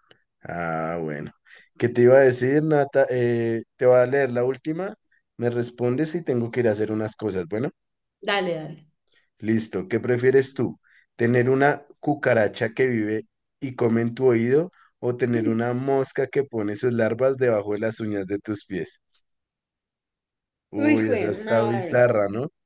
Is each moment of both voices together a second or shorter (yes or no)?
no